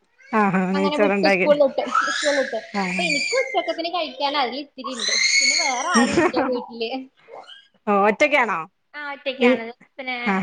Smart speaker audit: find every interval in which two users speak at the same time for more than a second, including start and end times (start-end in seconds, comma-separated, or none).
none